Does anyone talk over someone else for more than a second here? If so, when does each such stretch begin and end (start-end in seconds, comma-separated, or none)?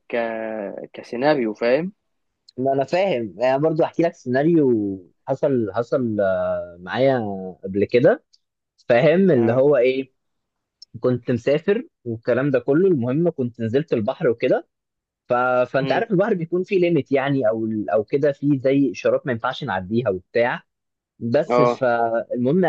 none